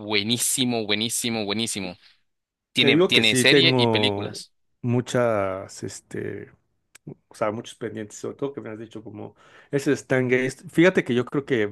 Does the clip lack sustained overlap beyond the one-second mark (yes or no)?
no